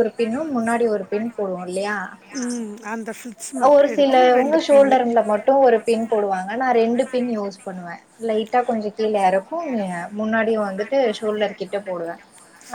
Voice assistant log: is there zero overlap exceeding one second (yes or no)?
no